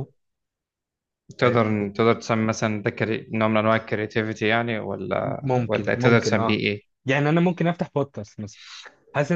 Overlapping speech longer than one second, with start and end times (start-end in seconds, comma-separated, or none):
5.2-6.6